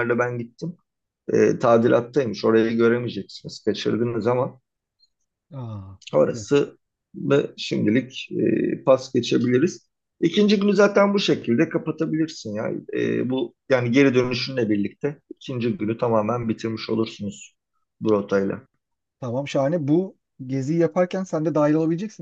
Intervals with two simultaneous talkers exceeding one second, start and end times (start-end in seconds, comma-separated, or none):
none